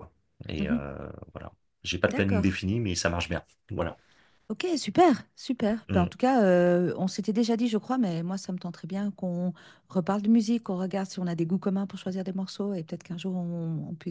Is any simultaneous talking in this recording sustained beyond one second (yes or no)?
no